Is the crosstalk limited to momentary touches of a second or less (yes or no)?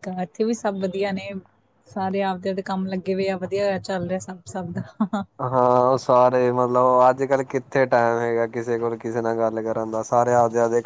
yes